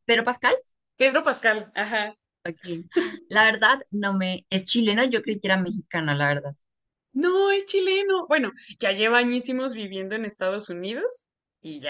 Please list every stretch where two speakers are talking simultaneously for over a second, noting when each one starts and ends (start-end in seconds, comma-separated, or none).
none